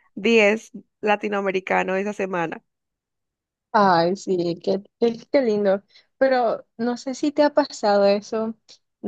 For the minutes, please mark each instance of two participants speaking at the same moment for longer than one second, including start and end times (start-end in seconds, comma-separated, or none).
none